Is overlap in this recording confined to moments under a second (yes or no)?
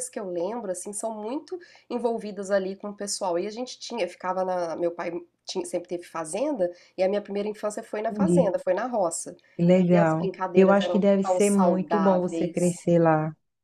no